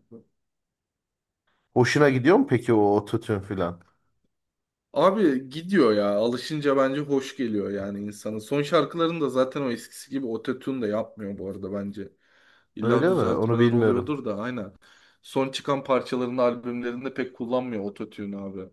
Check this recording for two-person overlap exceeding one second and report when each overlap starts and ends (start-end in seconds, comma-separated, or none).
12.8-14.1